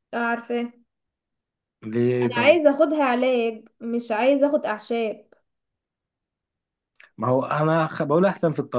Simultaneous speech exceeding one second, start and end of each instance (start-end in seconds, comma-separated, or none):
none